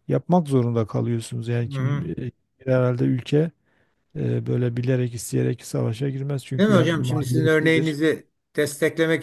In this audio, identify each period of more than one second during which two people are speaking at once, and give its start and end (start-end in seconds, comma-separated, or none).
6.6-8.0